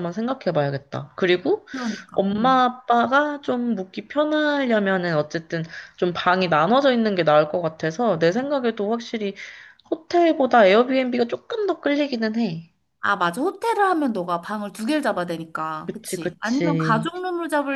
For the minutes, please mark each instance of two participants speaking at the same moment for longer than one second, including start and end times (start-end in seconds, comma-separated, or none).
15.9-17.1